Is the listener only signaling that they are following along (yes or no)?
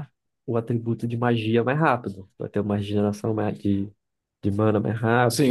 no